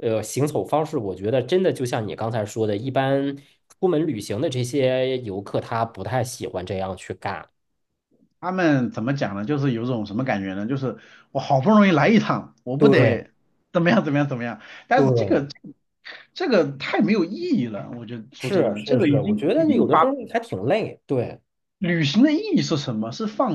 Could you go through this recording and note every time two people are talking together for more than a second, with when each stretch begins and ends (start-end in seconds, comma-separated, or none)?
18.4-20.0